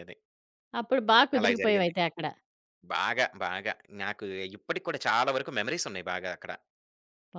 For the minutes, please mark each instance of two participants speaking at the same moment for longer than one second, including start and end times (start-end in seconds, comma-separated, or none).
none